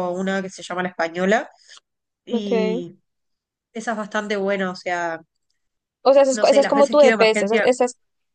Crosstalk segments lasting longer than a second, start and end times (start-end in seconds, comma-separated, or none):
6.3-7.7